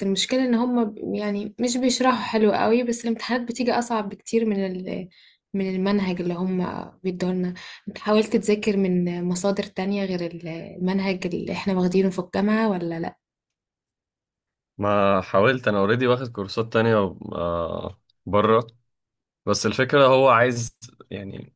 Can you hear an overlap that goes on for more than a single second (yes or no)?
no